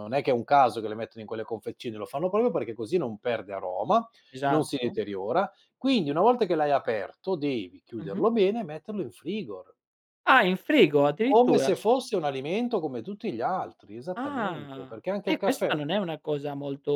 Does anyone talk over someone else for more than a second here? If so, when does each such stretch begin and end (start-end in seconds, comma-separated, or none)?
14.2-15.8